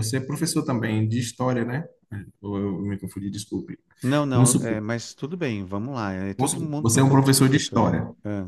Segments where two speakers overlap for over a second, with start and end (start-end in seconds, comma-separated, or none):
6.3-7.8